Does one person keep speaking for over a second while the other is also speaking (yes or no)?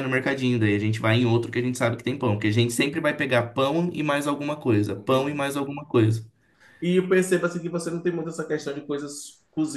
no